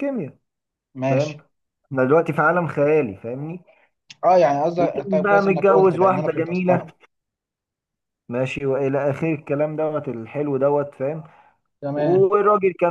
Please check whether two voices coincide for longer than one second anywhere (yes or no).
yes